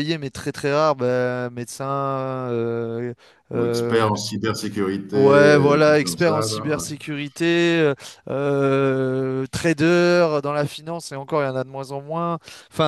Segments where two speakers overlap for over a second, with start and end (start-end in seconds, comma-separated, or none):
5.1-6.9